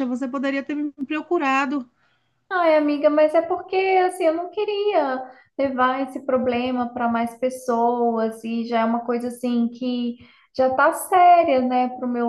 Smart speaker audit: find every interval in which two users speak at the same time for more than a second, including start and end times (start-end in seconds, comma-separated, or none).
none